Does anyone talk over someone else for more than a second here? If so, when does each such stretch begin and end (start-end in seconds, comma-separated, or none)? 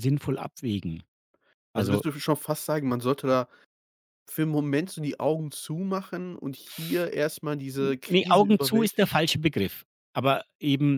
7.8-9.1